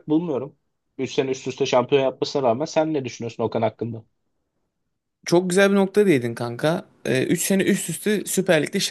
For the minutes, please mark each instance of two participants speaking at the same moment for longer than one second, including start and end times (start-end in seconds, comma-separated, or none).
none